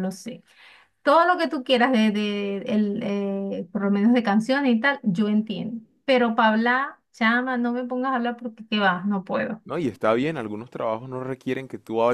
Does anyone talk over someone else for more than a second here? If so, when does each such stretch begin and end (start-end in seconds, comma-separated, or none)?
none